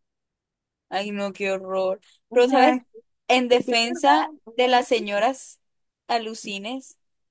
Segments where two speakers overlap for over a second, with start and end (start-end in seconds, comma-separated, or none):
3.5-5.0